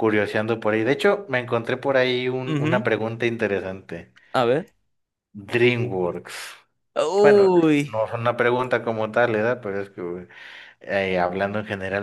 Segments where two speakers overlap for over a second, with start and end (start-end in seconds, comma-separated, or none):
none